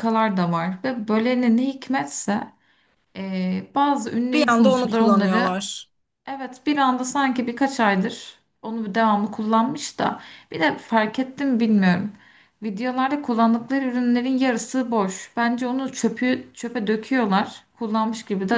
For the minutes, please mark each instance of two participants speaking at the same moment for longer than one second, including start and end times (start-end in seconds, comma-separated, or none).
4.3-5.6